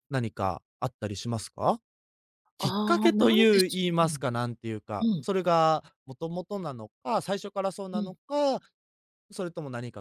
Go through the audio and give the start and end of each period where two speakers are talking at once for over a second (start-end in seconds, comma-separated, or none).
2.6-4.2